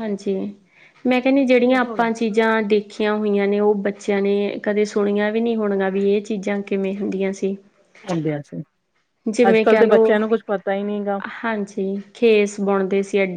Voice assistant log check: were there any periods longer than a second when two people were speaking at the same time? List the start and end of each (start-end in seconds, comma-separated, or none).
none